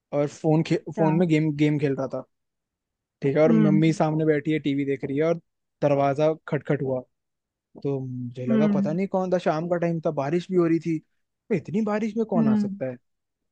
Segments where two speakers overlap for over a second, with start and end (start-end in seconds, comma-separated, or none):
none